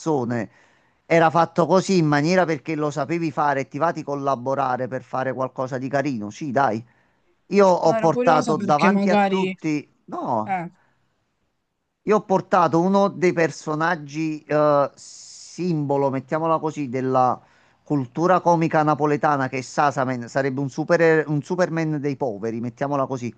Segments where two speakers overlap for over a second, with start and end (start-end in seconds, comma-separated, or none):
7.8-9.5